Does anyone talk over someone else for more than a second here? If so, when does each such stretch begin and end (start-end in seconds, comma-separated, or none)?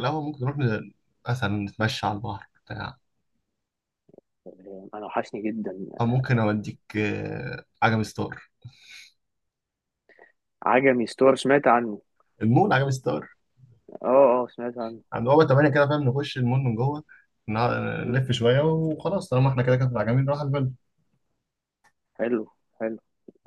none